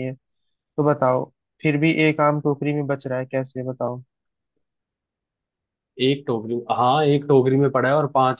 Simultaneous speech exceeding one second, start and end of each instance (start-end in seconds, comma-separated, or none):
none